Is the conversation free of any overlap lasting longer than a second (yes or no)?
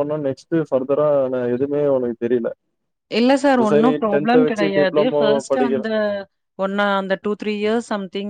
no